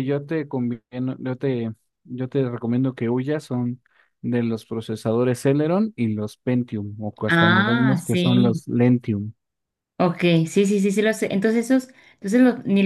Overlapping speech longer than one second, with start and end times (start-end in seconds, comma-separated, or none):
7.3-8.6